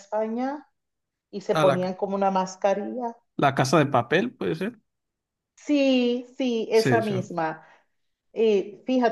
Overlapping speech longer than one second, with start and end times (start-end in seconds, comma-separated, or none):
none